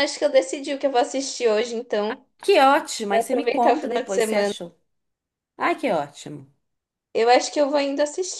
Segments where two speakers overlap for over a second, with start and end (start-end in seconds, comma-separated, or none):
3.1-4.5